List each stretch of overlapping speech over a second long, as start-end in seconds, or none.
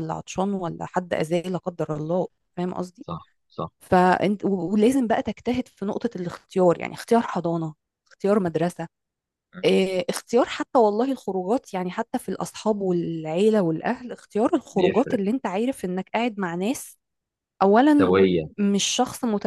none